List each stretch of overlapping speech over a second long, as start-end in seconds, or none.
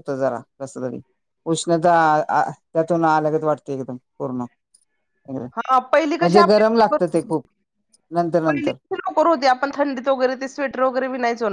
5.6-6.9